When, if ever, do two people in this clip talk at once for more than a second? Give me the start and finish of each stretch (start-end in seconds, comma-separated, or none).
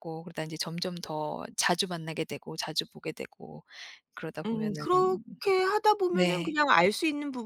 none